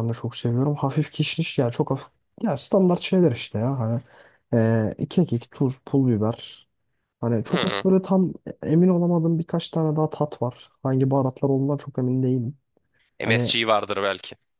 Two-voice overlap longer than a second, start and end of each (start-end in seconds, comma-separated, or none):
none